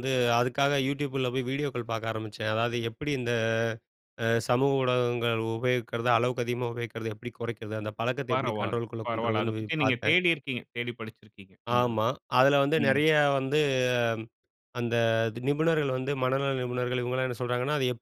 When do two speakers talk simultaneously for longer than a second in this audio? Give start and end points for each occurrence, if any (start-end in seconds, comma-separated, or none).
8.3-10.2